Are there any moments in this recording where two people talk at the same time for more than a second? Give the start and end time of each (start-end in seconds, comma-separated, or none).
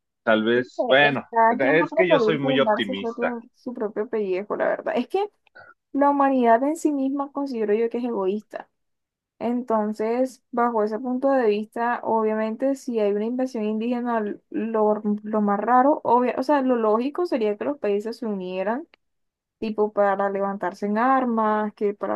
1.0-3.3